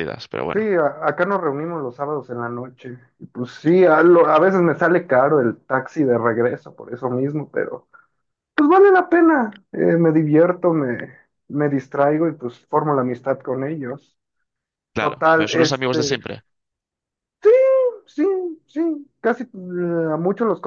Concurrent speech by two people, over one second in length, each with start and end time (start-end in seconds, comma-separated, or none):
15.0-16.2